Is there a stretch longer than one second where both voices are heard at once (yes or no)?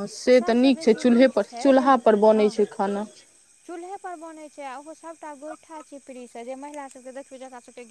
no